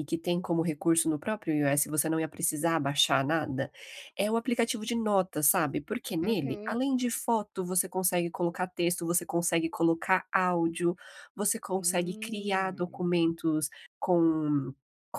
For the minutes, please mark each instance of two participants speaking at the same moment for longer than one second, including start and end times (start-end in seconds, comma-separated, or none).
11.8-13.1